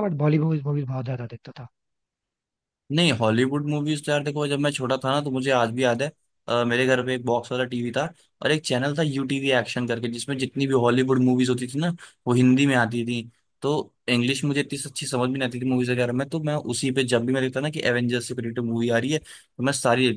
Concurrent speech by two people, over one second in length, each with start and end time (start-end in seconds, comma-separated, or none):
none